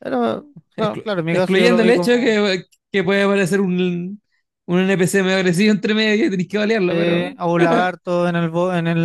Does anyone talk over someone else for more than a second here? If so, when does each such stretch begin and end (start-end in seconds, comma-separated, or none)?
0.8-2.4